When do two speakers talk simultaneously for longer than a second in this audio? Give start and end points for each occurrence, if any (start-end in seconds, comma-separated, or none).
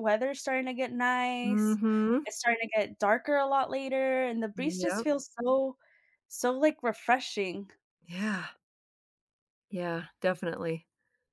none